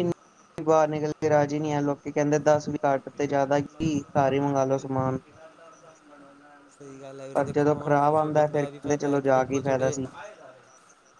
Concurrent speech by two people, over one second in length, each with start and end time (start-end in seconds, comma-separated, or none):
7.3-10.0